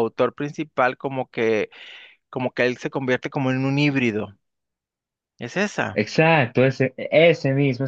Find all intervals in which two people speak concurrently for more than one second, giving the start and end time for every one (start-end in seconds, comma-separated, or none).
none